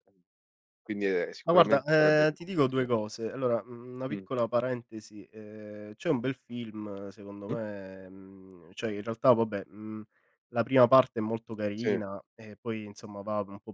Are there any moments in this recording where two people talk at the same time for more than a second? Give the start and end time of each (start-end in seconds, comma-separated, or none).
1.4-2.9